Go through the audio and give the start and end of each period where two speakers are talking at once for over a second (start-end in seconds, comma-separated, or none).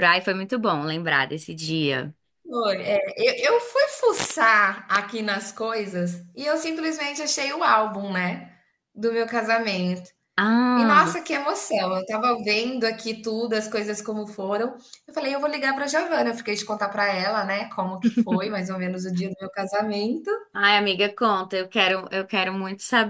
none